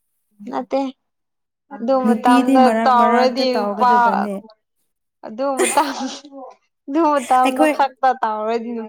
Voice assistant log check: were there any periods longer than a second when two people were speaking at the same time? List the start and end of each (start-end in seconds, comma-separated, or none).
2.0-3.9